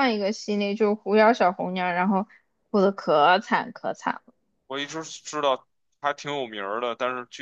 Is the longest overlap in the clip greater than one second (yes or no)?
no